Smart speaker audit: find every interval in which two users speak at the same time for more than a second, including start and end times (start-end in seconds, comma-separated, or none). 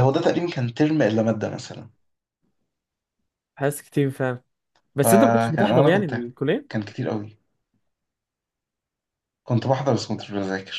5.0-6.3